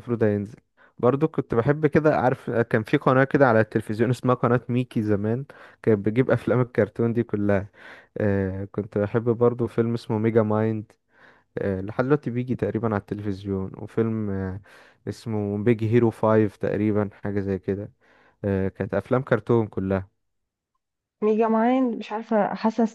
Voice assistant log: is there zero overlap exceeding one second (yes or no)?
yes